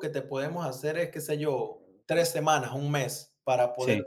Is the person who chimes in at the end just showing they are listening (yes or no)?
yes